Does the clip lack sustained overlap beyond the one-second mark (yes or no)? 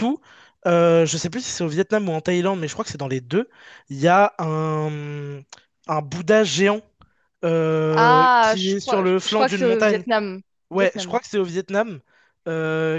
no